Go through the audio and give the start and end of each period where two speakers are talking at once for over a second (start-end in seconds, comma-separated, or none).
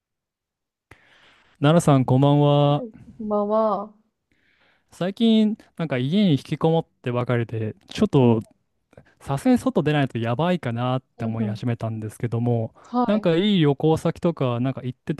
none